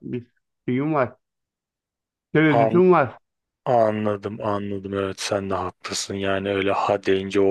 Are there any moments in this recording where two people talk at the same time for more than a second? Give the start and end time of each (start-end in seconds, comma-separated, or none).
none